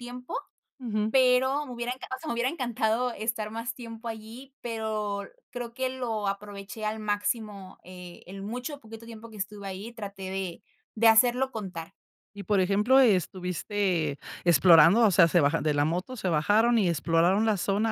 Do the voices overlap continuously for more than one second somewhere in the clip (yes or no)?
no